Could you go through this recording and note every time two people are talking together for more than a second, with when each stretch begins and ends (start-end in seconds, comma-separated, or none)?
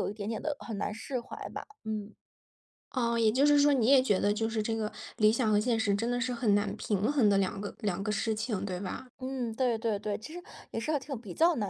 none